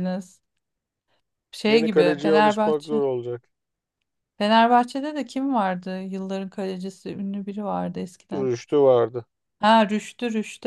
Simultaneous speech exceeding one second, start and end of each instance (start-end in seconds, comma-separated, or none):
1.7-3.0